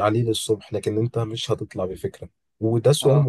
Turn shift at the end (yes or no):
no